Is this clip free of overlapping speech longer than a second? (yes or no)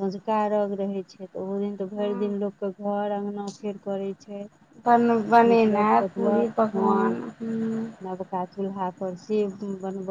no